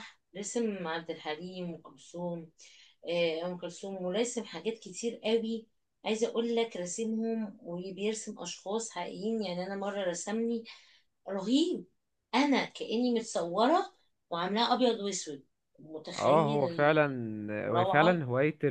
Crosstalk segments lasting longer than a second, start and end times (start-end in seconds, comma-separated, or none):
none